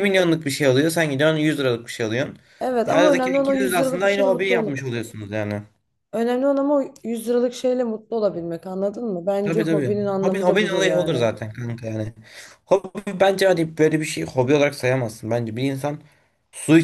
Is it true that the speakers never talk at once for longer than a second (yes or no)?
no